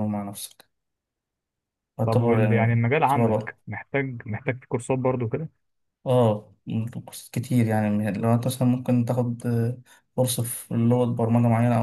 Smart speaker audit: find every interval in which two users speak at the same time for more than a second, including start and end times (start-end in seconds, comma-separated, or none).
2.0-3.6